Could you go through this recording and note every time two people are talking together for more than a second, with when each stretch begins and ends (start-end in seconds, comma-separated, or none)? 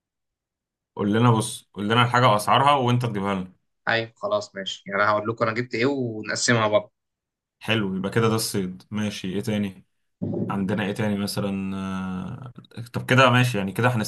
none